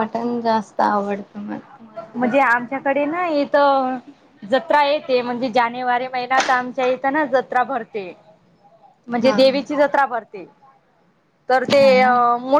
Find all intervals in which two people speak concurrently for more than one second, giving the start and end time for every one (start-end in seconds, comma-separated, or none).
none